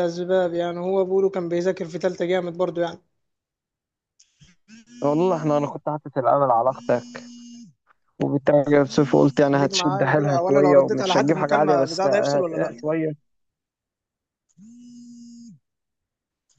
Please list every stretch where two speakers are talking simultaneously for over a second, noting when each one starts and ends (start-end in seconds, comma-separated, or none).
9.4-12.7